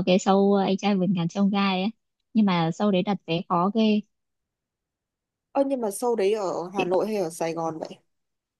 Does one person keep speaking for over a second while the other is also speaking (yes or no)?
no